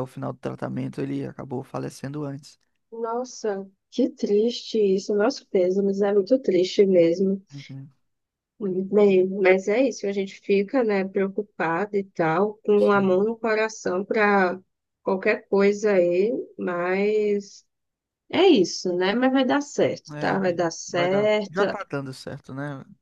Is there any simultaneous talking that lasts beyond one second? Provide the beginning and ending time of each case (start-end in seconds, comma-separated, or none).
20.1-21.6